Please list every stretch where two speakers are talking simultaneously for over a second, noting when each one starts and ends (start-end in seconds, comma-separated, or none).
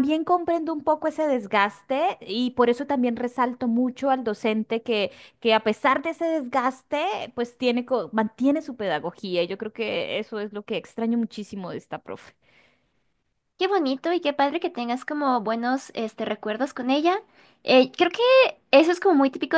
none